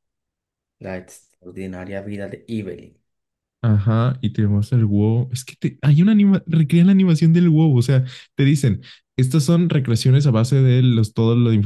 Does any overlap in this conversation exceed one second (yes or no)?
no